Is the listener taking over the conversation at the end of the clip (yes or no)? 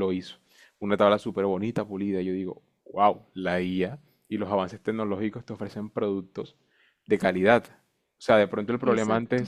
no